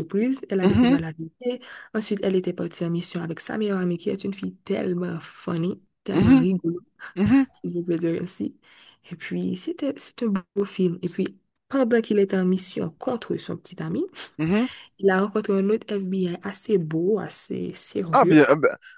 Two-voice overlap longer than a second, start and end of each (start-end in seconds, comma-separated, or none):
none